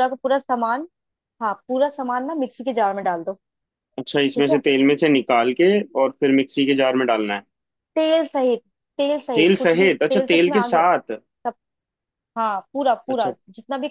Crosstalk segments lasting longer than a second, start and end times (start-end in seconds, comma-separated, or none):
9.3-10.8